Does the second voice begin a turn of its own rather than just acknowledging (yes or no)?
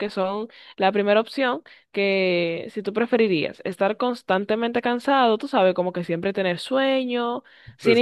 no